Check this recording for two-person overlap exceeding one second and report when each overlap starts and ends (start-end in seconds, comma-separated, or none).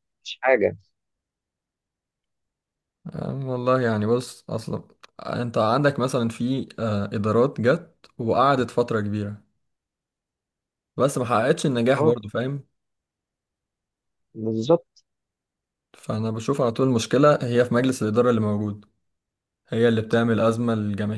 none